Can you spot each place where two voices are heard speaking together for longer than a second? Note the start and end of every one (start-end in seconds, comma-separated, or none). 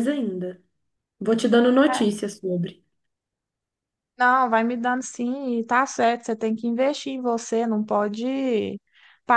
none